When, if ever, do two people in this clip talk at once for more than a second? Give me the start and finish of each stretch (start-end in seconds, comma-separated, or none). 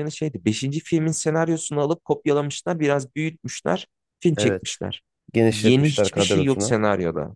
5.5-6.8